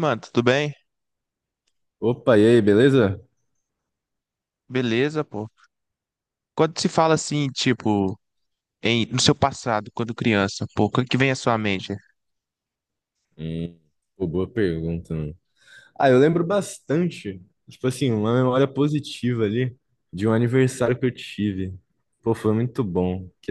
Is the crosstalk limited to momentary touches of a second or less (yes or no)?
yes